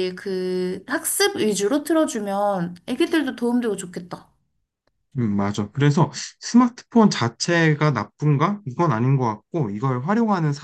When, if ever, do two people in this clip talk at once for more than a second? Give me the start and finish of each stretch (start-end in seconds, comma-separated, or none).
none